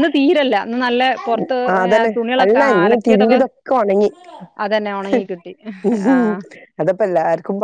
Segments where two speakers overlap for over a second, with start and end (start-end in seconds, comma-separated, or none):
none